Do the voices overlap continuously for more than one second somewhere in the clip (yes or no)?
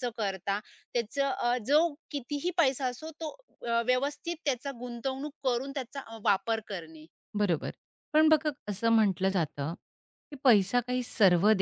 no